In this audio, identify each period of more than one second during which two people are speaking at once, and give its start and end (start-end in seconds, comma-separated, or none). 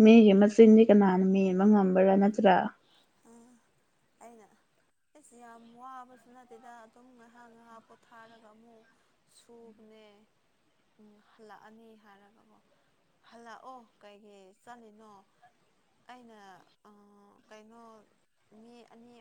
none